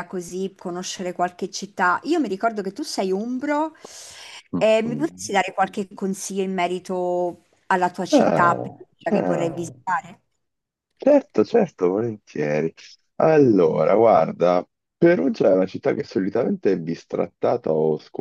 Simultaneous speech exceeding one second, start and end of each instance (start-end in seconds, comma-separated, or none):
8.1-9.7